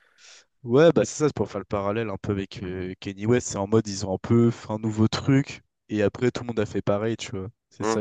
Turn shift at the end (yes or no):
yes